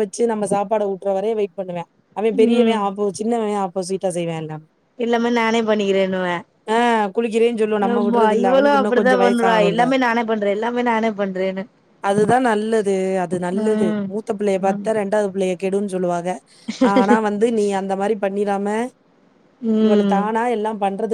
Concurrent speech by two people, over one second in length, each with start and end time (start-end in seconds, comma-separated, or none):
7.9-9.8